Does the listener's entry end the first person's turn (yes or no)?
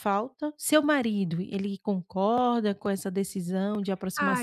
yes